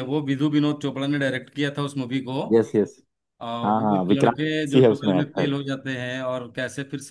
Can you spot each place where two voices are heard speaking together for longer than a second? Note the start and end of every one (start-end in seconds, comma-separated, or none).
3.6-5.5